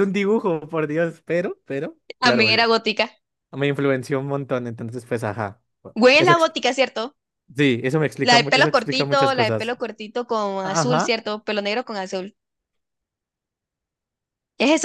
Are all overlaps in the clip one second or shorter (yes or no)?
no